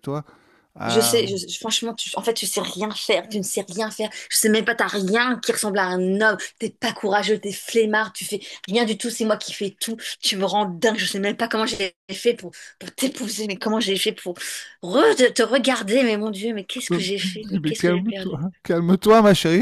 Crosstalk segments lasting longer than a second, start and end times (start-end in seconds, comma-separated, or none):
16.9-18.3